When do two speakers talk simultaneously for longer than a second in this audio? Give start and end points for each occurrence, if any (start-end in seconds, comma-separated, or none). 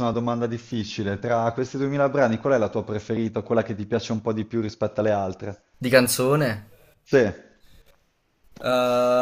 none